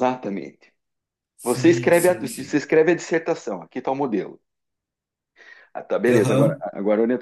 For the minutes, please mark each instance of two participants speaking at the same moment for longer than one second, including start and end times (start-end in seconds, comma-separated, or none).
1.4-2.6